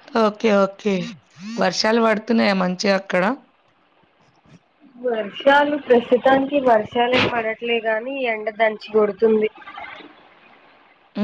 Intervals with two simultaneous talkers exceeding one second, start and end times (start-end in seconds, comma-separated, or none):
none